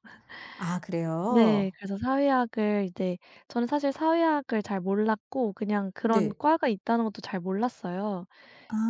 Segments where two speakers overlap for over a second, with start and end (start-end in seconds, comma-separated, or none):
none